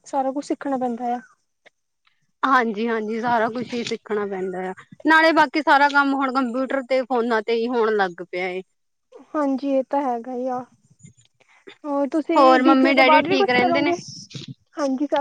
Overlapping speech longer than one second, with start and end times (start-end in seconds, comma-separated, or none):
12.4-13.9